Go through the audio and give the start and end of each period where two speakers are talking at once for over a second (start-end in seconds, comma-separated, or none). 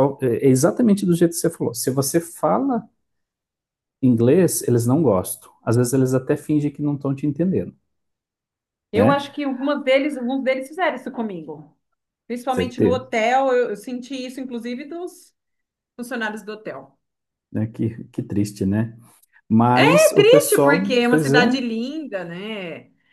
20.1-21.6